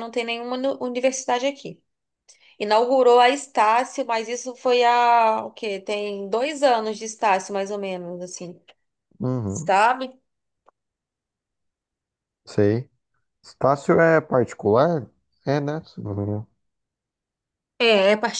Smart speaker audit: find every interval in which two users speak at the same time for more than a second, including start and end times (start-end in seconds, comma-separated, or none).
none